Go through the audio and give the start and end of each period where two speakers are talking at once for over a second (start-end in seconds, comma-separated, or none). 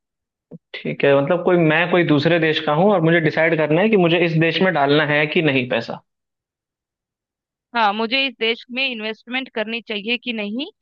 none